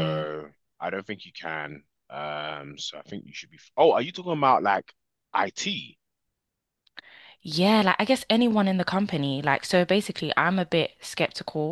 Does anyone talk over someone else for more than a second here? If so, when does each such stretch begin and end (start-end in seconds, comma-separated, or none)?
none